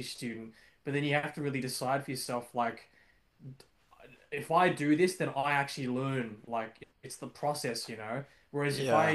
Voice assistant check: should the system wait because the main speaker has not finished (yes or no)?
yes